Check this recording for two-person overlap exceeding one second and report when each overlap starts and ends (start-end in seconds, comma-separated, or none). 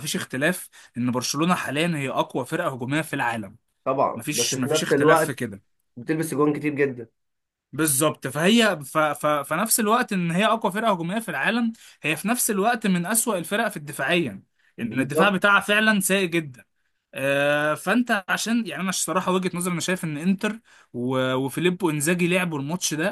4.1-5.5